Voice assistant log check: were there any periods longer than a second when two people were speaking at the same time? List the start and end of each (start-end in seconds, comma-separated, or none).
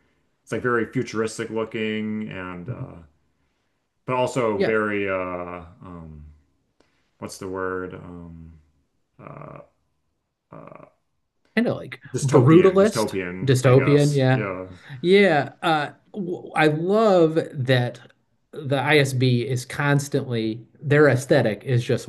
12.1-14.5